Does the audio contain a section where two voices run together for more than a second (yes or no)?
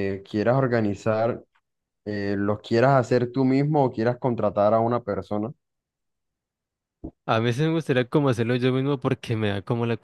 no